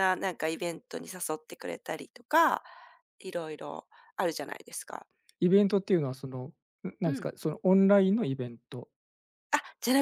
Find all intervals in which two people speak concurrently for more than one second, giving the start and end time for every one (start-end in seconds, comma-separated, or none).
none